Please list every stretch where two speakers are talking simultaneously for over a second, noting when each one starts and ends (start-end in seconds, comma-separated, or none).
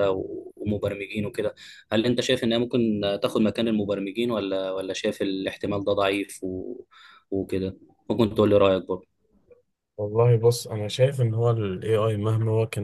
none